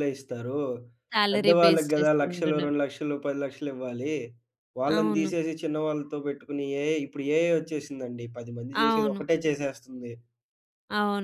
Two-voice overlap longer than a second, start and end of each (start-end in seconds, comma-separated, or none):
1.3-2.7